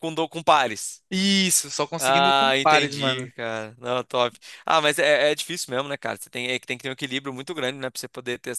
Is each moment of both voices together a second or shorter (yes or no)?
no